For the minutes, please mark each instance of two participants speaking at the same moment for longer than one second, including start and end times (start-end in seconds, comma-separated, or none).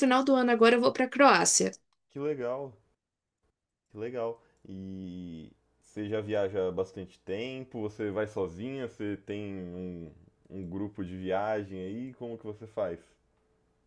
none